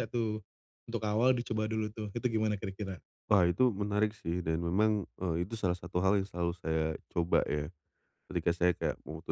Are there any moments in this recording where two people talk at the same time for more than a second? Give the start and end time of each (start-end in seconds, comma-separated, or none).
none